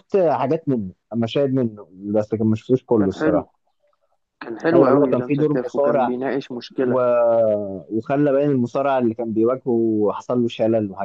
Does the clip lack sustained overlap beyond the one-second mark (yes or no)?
no